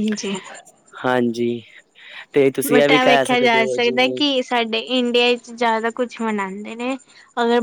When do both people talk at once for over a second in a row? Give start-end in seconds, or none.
2.7-4.2